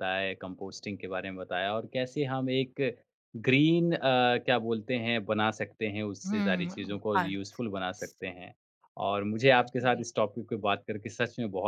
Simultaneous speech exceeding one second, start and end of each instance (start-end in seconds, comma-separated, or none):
6.3-8.1